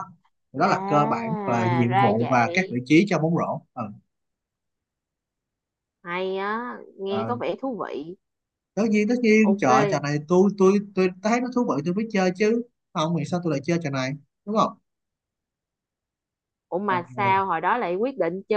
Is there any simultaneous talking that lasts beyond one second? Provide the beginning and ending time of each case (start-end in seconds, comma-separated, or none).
0.6-2.8